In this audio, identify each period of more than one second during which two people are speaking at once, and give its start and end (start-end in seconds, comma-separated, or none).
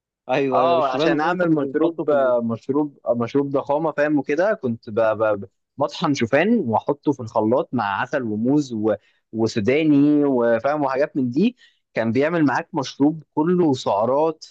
0.5-2.3